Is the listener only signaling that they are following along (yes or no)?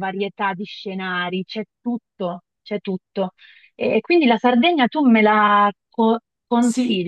no